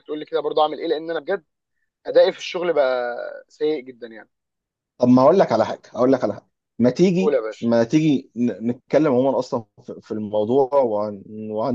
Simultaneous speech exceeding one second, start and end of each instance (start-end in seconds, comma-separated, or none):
none